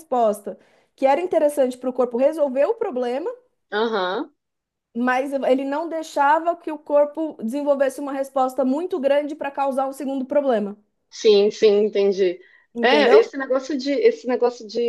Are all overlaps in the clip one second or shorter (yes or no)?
yes